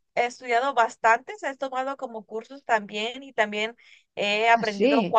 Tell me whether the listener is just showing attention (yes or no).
yes